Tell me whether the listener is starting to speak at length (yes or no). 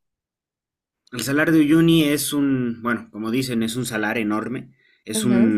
no